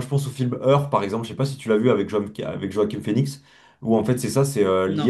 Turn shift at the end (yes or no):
no